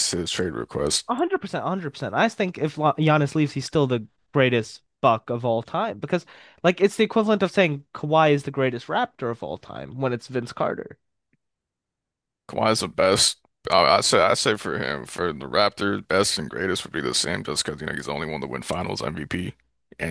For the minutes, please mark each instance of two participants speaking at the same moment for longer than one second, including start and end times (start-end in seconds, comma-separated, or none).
none